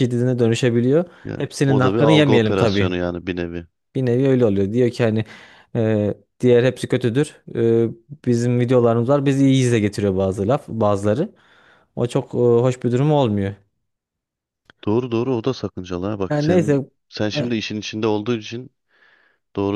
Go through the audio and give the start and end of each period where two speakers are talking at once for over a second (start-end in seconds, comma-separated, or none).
1.2-3.0